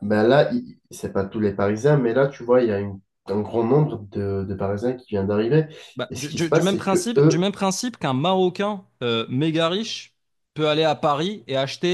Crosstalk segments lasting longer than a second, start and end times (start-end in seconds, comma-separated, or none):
6.1-7.5